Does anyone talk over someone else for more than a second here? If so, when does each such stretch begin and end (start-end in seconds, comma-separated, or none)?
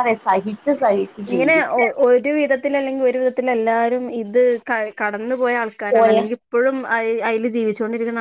none